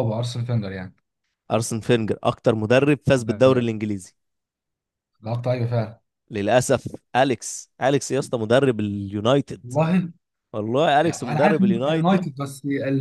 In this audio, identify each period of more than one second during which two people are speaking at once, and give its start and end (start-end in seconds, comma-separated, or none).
11.0-12.3